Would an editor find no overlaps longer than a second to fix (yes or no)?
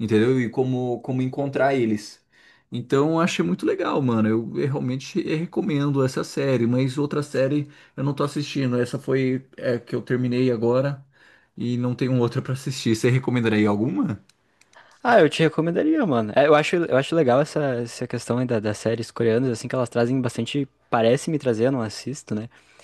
yes